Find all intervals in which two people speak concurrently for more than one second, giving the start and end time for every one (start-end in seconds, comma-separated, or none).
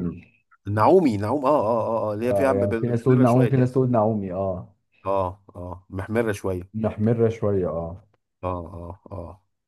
2.2-3.7